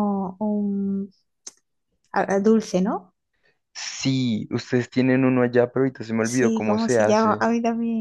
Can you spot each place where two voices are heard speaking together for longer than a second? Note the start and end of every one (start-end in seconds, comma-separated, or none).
6.2-7.5